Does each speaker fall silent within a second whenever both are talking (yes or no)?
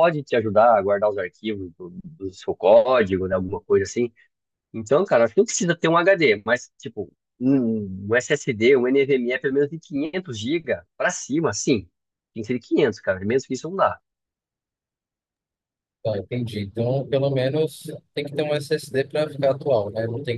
yes